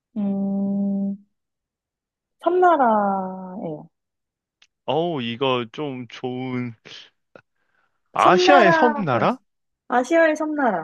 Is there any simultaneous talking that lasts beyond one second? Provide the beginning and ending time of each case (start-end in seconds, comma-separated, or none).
8.2-9.4